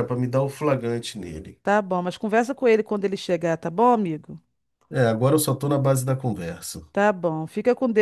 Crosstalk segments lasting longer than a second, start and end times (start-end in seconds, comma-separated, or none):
none